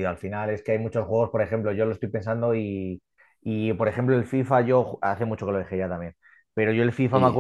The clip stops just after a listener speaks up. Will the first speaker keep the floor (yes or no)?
yes